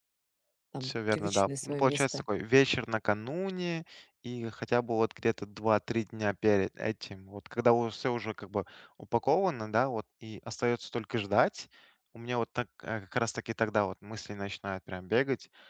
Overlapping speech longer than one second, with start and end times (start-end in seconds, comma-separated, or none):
0.8-2.2